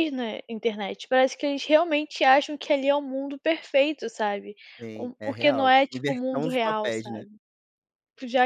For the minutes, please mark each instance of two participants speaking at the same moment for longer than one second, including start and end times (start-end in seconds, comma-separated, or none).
5.0-7.2